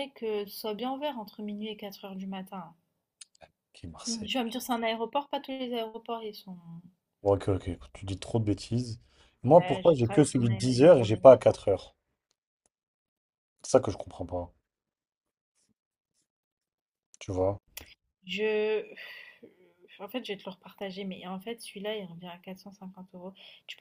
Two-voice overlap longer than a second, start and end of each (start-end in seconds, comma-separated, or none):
9.5-11.4